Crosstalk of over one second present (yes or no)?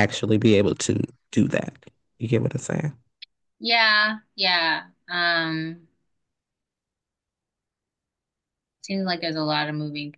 no